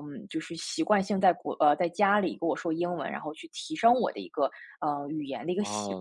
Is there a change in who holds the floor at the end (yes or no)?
yes